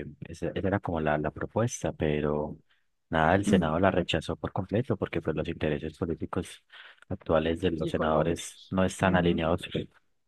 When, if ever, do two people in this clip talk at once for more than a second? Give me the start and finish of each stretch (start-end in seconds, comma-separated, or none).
7.8-9.4